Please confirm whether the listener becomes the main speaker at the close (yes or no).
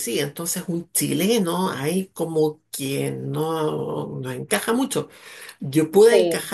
no